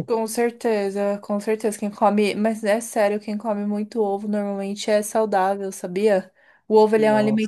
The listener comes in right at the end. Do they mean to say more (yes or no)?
no